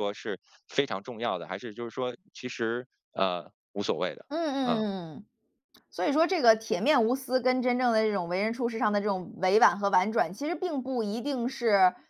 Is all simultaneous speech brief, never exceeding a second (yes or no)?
yes